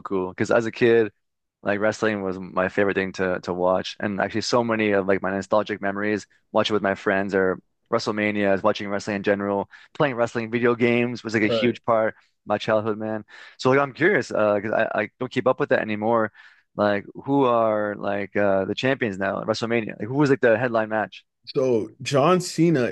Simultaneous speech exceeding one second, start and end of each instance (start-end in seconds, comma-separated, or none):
none